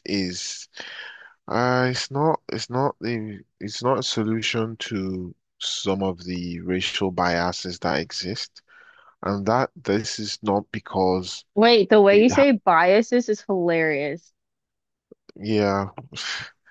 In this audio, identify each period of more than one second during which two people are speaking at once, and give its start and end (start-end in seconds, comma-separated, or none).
none